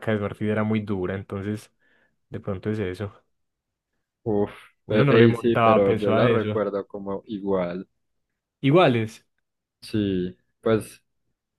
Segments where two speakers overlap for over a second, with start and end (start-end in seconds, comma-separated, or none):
4.9-6.6